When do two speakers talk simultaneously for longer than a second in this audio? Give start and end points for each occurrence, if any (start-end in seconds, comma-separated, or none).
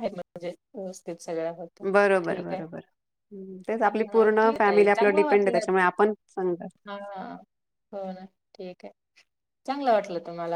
3.8-5.7